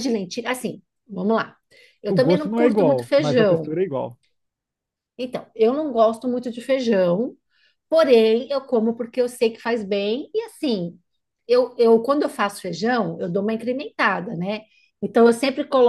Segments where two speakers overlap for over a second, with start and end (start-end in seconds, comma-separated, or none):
2.1-3.8